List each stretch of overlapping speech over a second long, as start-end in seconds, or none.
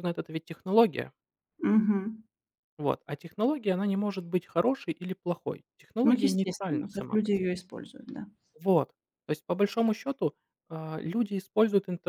6.0-7.6